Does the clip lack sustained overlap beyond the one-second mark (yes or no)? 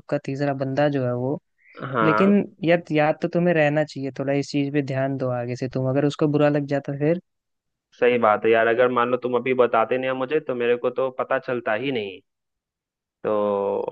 yes